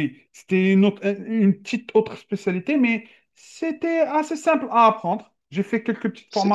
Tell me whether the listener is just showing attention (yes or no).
no